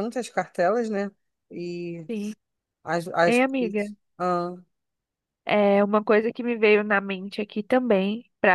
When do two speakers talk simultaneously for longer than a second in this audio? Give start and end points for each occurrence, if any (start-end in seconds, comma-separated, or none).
none